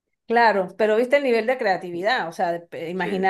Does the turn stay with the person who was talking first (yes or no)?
yes